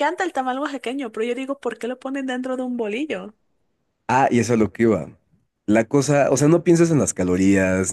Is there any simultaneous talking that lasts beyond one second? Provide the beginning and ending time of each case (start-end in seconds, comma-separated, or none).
none